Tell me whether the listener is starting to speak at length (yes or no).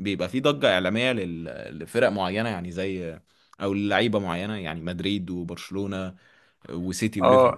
yes